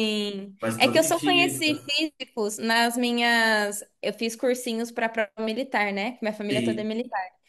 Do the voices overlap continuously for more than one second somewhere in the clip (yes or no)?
yes